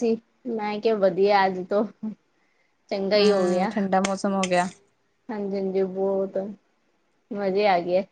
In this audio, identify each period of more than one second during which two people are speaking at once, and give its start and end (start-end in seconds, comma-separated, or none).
none